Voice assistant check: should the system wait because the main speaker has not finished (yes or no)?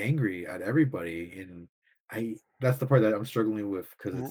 yes